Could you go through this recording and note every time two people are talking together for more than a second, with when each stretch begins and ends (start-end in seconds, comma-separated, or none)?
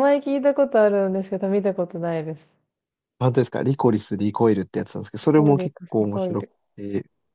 5.2-6.6